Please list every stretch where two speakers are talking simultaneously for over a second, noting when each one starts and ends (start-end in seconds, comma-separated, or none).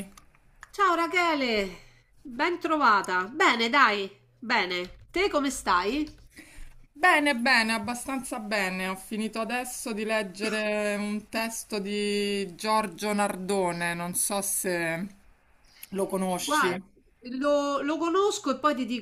none